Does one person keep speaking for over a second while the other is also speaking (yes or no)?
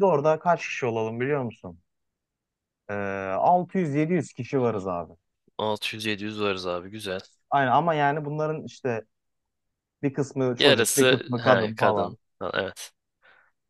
yes